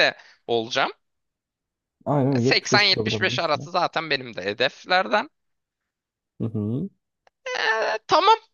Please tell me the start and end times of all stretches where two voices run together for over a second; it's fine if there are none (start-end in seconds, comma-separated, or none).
2.4-3.7